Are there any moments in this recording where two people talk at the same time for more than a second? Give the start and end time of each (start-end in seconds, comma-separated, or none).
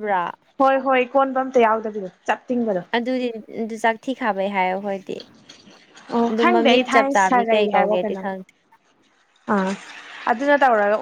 6.3-8.2